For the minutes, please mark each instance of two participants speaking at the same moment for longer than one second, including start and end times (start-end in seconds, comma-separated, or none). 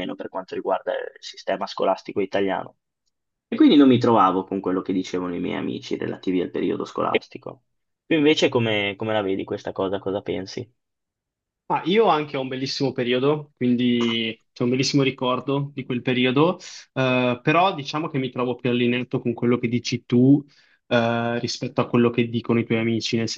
none